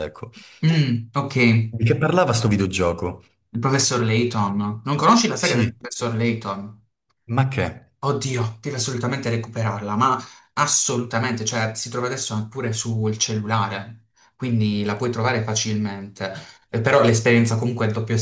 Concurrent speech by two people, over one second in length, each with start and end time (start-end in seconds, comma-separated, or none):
none